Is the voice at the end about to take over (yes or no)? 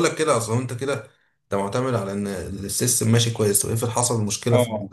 yes